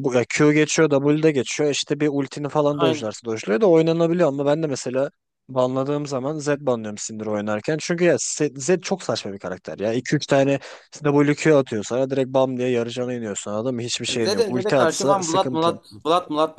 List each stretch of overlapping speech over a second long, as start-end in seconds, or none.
14.1-15.7